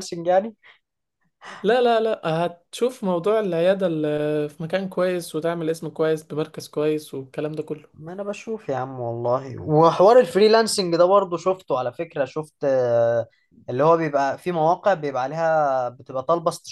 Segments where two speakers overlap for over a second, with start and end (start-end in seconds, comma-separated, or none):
none